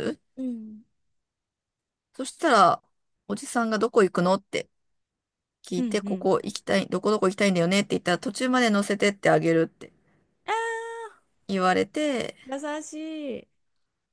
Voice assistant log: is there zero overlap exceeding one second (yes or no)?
yes